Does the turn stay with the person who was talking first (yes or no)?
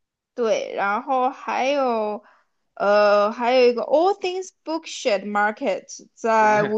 yes